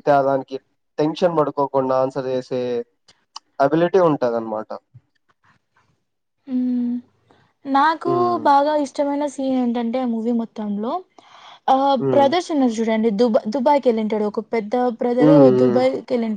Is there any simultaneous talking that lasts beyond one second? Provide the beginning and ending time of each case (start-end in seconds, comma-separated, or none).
none